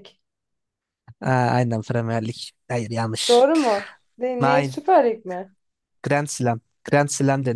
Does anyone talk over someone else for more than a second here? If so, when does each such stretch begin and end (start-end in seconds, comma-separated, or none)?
none